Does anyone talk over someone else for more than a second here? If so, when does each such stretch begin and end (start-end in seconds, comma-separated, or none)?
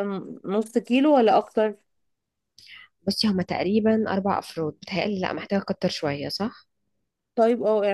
none